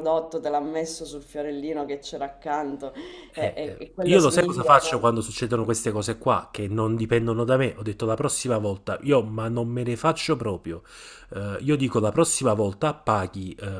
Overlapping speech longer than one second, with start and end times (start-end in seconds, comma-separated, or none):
3.4-5.0